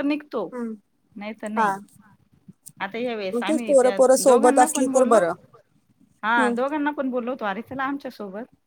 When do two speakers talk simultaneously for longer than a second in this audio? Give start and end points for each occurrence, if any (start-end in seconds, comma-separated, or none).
3.3-5.2